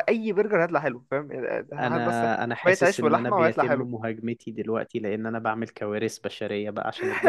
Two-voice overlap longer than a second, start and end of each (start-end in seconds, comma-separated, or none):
1.8-3.9